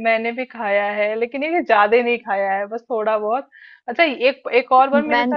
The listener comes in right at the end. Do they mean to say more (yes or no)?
no